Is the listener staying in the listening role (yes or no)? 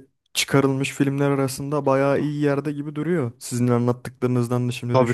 no